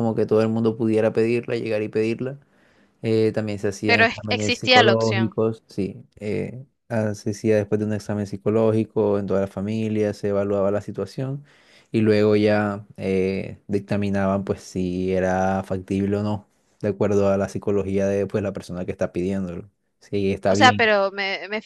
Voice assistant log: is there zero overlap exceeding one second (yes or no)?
no